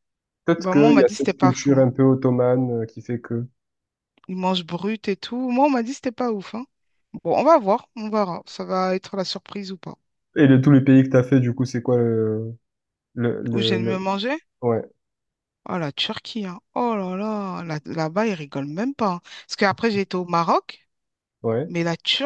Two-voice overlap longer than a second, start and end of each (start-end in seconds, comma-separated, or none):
0.6-1.9